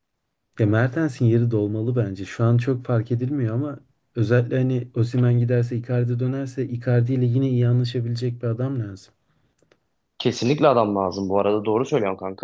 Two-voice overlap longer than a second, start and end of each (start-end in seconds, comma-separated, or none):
none